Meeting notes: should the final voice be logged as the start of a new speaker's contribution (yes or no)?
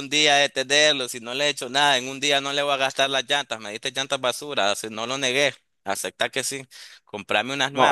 yes